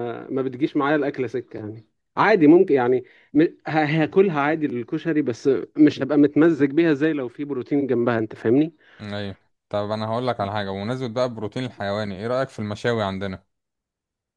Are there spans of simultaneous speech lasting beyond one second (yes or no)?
no